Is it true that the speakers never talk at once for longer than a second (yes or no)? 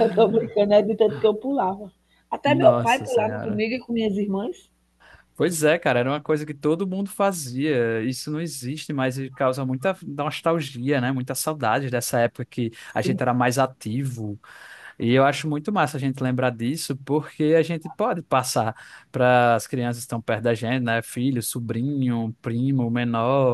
no